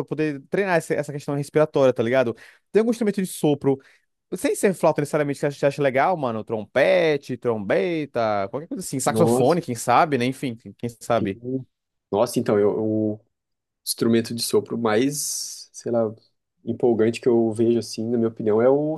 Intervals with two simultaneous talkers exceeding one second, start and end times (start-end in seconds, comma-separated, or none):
none